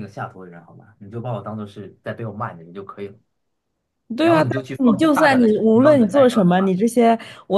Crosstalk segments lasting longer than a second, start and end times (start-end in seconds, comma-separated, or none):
4.2-6.7